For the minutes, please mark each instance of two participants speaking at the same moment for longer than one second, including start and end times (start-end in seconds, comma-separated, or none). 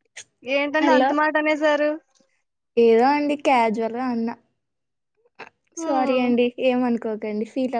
none